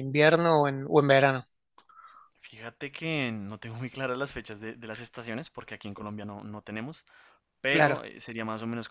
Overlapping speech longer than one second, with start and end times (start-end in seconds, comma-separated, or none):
none